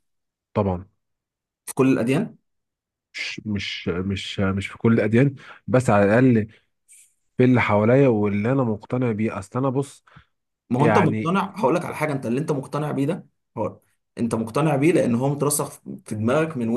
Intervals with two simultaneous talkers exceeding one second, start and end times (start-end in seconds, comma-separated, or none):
none